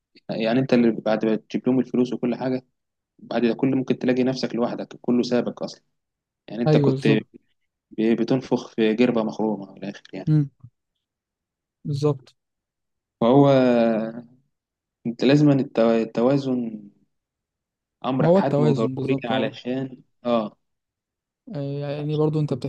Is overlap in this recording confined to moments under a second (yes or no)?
no